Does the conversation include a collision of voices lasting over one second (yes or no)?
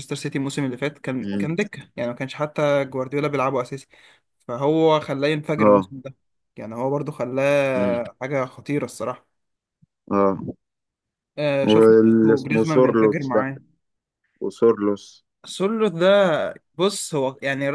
yes